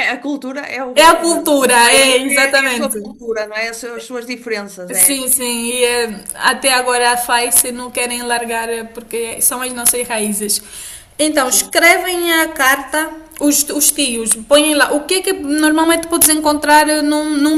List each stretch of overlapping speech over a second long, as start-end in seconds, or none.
0.9-3.0